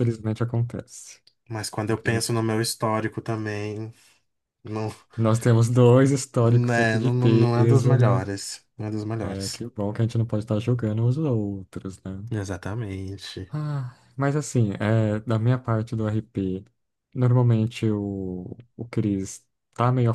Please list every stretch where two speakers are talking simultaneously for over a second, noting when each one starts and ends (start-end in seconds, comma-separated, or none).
6.4-8.2